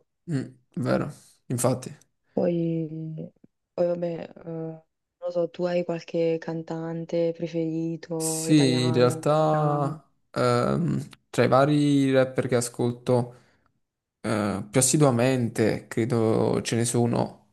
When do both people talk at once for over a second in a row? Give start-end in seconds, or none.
8.2-10.0